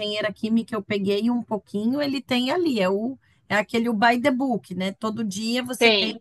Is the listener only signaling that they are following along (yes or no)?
yes